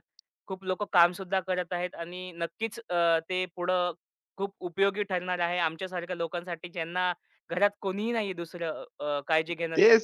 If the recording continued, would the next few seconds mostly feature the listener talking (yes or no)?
yes